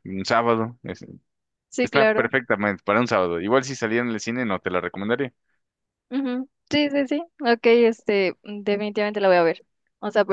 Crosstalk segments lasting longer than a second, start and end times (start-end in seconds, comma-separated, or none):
none